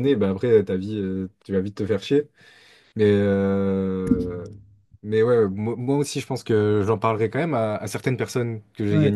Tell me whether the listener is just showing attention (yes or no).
yes